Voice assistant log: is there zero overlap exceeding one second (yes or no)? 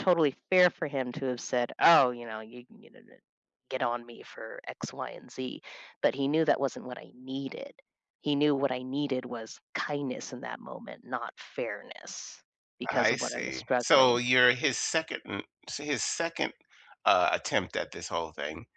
no